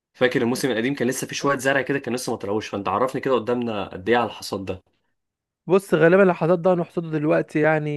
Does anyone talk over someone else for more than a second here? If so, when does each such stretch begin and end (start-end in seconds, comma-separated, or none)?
none